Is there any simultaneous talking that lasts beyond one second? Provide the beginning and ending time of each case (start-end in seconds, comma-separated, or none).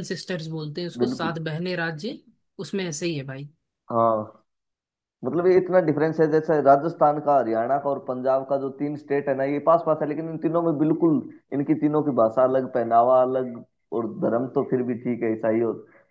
none